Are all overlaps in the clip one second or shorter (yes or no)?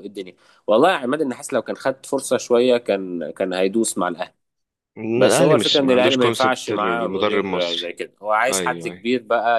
no